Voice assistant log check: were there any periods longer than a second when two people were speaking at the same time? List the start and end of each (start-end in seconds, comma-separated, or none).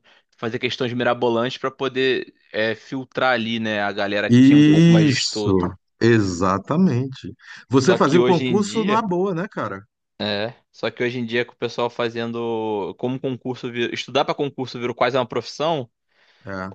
4.3-5.5, 7.7-9.1